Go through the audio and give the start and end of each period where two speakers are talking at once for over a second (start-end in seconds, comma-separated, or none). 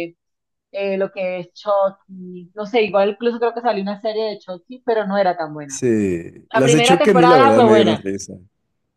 6.5-8.0